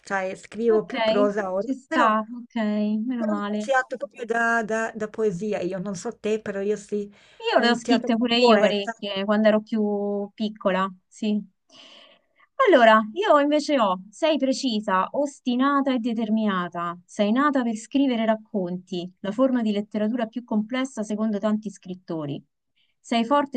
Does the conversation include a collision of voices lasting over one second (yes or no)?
yes